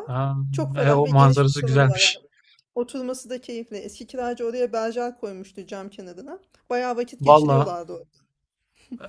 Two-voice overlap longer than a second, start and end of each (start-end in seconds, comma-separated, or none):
0.8-2.2